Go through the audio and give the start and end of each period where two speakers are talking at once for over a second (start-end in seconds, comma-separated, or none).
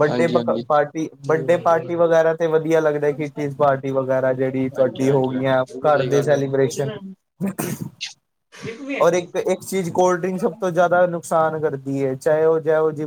4.8-6.9